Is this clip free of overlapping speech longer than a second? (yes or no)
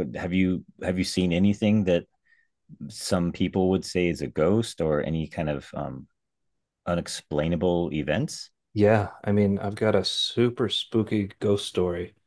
yes